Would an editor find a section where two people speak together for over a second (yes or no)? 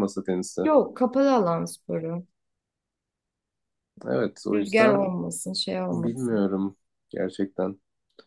no